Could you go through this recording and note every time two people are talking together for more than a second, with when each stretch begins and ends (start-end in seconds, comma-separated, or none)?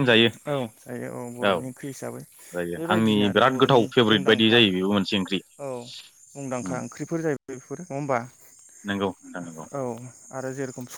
2.8-4.5